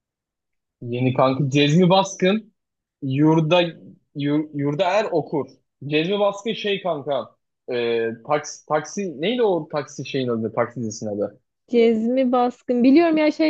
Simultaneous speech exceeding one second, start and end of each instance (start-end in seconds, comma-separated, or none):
none